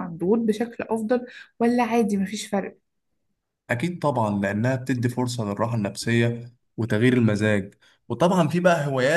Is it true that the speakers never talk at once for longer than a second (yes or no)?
yes